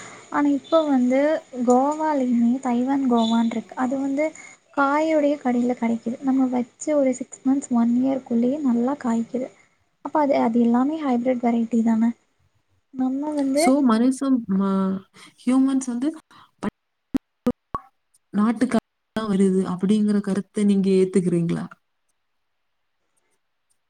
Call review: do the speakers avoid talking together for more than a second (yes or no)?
yes